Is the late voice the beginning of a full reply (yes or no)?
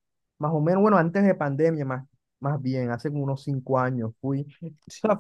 no